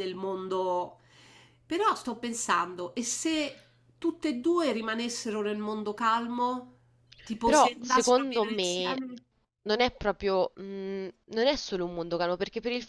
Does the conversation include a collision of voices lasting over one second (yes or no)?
yes